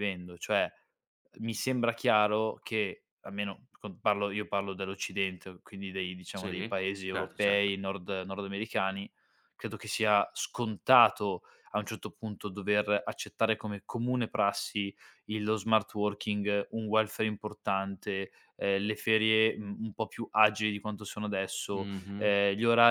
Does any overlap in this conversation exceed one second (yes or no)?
yes